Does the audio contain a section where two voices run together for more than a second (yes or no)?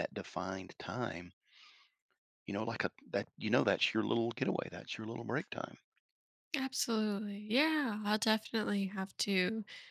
no